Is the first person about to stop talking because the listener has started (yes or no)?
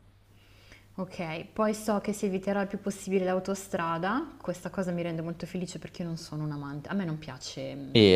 yes